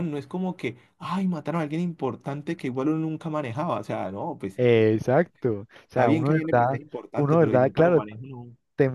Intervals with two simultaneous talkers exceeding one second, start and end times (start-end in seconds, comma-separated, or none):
5.9-8.0